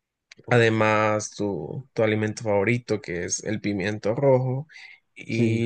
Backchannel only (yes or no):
yes